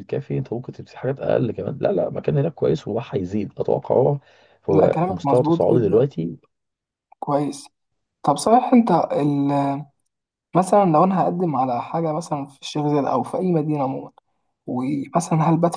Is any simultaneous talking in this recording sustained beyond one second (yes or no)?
yes